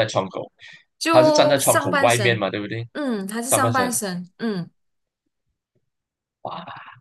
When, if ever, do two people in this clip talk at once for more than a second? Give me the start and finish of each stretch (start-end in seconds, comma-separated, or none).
1.1-2.4